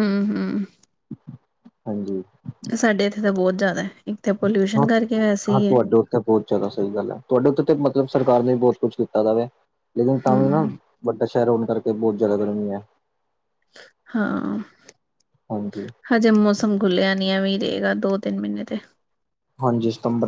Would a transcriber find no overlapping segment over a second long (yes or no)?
yes